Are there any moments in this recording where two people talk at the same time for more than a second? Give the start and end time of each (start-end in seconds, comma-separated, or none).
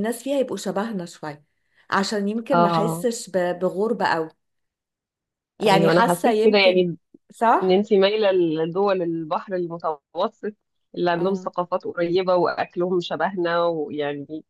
5.7-6.9